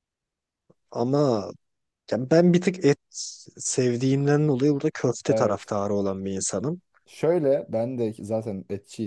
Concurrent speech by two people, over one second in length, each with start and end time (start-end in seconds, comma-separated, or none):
none